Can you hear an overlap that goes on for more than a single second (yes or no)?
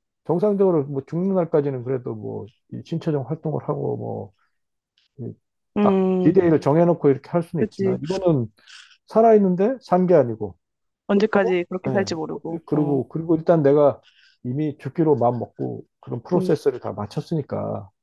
yes